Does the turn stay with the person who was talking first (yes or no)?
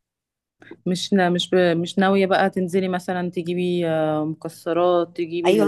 no